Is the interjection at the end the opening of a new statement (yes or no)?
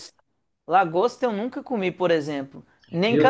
no